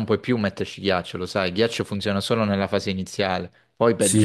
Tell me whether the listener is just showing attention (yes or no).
no